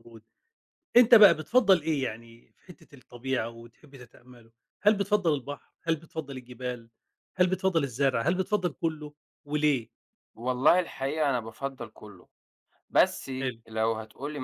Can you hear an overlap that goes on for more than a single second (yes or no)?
no